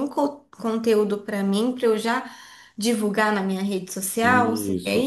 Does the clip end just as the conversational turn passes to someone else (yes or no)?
yes